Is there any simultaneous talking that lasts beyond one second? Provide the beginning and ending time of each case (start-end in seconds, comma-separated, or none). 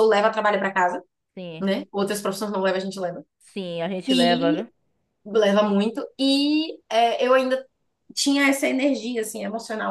none